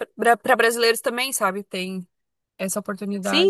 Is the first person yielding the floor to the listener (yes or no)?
yes